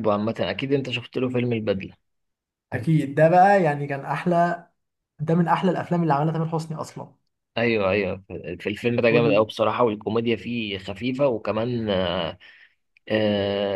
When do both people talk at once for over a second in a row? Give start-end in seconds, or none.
none